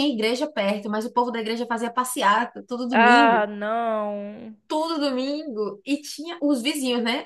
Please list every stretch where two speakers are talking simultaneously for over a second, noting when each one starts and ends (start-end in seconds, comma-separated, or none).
none